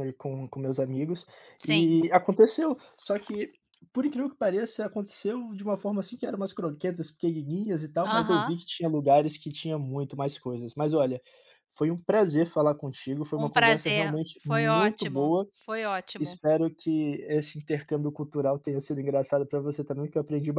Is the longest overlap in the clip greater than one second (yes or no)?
yes